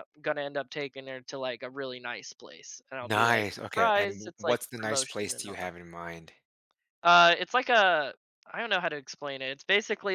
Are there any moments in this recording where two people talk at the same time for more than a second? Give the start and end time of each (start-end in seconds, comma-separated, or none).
3.0-5.7